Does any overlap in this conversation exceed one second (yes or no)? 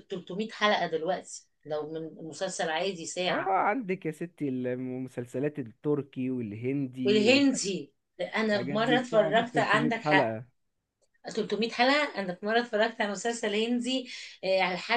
yes